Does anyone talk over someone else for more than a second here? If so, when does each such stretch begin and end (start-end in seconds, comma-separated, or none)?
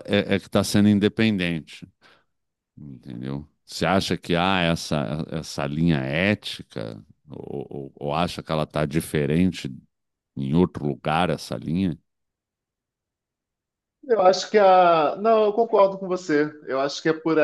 none